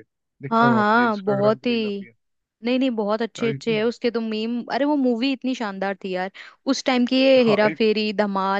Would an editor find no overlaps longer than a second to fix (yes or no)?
no